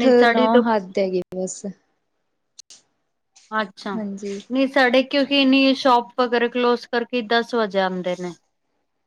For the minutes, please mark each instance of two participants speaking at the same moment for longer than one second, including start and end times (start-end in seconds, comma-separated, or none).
none